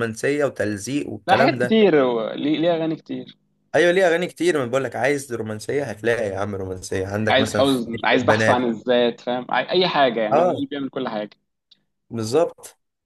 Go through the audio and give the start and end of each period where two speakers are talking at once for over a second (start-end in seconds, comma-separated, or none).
7.3-8.7